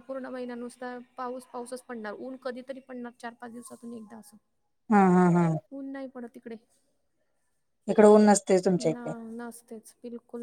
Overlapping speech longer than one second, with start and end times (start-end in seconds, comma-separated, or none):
none